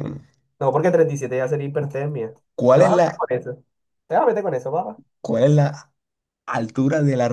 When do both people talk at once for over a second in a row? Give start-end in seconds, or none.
none